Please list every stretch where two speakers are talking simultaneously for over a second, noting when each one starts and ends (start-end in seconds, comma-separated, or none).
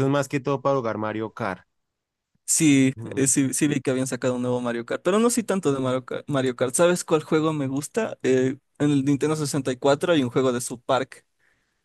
none